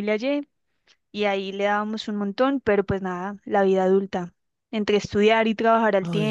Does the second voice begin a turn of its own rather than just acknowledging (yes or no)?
no